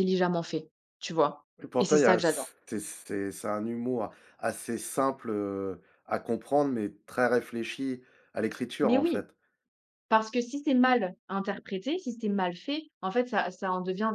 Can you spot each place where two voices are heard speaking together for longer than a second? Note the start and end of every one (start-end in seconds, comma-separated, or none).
none